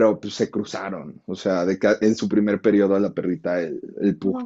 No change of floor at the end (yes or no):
yes